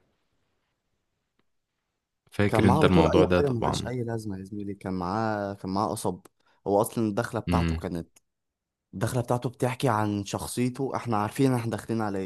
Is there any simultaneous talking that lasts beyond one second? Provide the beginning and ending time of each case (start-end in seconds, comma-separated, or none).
2.5-3.9